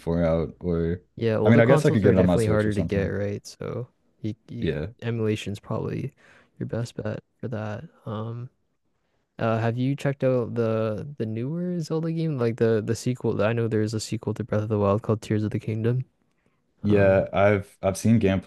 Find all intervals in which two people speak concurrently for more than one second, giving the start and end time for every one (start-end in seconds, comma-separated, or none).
1.4-3.1